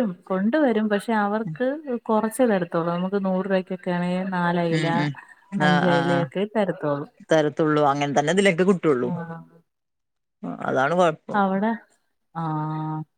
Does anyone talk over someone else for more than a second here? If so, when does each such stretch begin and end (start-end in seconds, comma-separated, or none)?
none